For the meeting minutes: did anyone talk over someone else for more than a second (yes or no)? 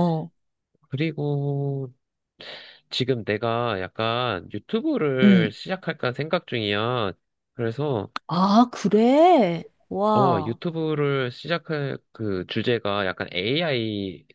no